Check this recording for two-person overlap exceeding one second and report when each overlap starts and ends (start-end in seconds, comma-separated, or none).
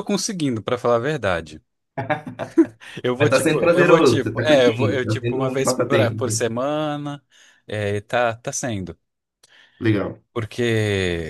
3.2-6.5